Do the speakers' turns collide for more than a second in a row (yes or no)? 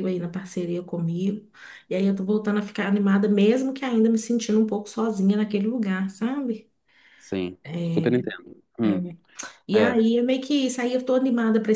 no